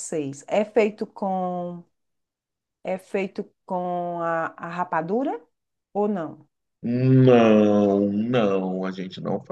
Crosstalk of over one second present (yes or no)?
no